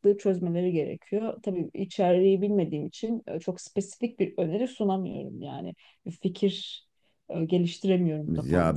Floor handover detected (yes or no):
yes